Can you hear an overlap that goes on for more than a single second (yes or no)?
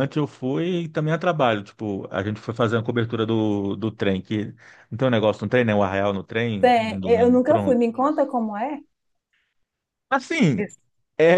yes